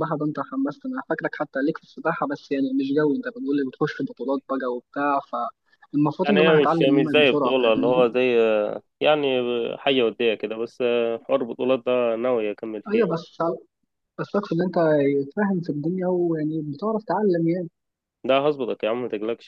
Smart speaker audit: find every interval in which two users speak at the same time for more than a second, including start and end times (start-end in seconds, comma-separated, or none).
6.2-8.1